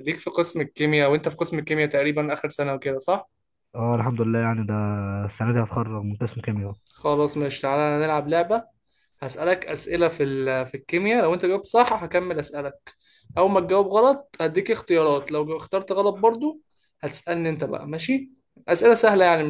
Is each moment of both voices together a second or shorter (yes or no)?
yes